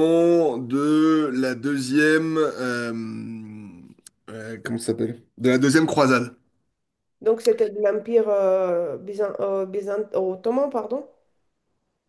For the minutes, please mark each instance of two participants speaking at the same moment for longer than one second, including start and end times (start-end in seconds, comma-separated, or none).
none